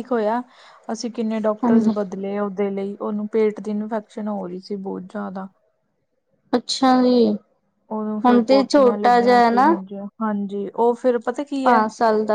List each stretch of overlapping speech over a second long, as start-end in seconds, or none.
8.3-9.7